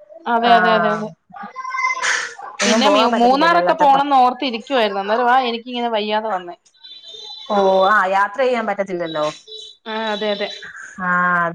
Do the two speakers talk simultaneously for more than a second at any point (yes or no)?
yes